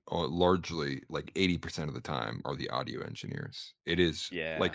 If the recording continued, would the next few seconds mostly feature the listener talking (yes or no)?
no